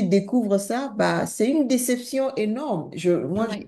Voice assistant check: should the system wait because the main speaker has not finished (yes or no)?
yes